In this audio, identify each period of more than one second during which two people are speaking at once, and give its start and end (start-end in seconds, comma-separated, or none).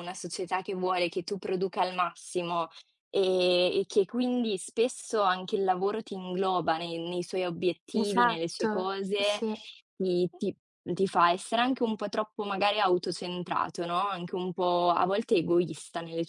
7.9-9.4